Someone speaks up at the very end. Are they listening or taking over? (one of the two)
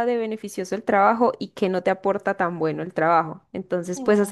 listening